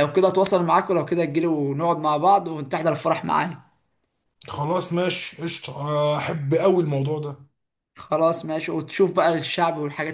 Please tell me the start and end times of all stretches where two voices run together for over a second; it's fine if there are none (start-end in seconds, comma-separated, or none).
none